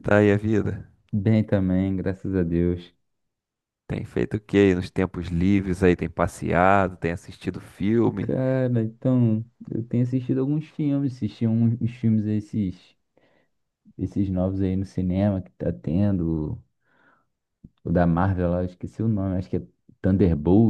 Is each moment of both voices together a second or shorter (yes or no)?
yes